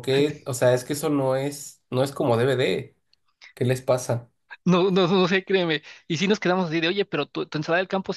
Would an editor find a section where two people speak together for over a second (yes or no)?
no